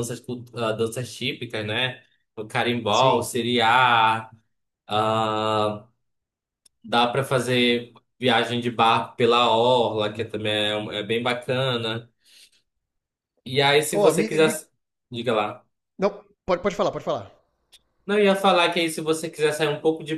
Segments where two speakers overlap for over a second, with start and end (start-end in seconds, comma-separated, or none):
none